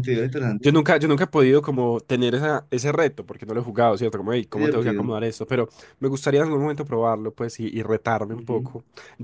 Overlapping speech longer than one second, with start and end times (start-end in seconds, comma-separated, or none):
none